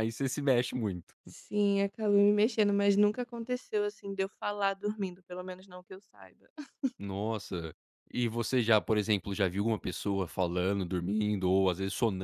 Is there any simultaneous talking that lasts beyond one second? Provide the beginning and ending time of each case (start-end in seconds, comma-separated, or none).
none